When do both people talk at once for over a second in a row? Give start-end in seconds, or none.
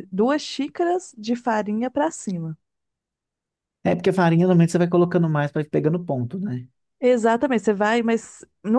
none